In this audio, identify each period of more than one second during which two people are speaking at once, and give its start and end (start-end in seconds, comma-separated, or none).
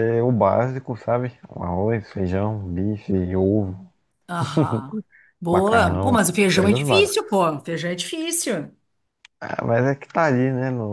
5.5-7.5